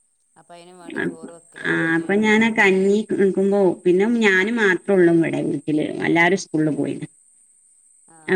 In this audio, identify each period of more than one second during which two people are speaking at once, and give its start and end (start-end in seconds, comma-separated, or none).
none